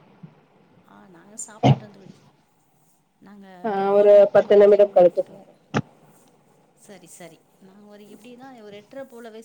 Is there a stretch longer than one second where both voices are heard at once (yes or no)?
yes